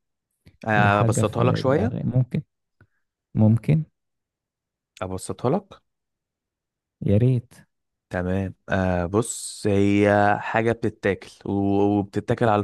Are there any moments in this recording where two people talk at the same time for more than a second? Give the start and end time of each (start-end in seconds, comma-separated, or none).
0.7-1.9